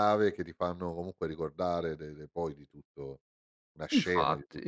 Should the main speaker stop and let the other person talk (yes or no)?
yes